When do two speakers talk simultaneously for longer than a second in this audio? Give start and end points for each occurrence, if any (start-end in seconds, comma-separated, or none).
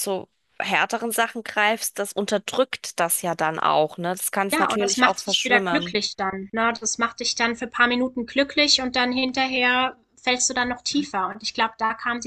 4.5-6.0